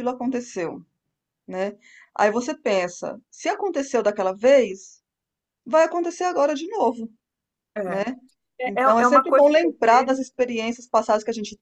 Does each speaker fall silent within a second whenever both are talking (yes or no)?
no